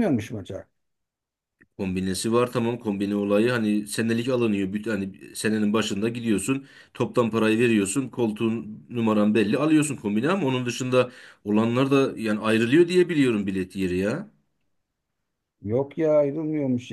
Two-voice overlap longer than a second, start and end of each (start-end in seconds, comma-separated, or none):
none